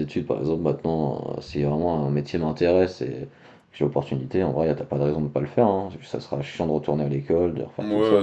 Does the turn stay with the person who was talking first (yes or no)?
no